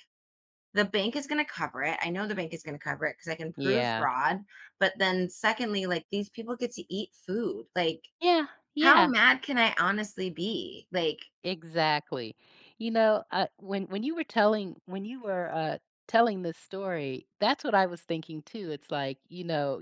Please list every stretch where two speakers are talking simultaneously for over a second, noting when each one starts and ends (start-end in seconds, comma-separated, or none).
none